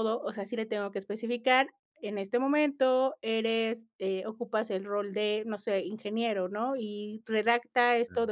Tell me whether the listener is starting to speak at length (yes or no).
no